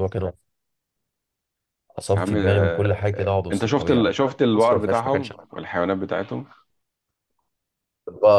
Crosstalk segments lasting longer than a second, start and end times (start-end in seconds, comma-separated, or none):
2.1-5.5